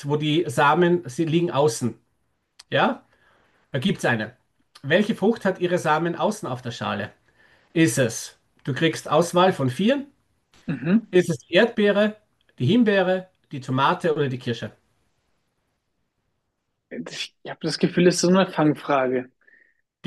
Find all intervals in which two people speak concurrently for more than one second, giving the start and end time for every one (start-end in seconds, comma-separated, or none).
none